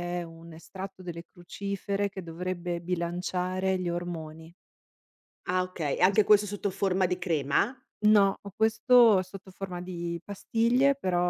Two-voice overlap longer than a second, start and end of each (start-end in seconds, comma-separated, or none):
none